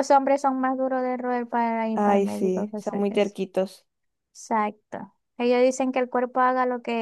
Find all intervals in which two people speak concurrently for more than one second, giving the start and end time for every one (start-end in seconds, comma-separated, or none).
1.9-3.4